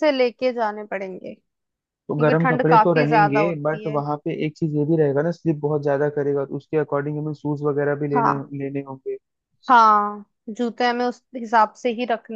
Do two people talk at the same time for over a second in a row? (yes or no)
yes